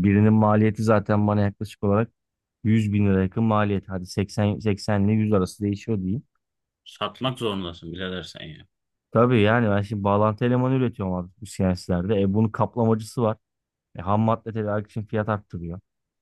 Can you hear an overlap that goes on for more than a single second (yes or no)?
no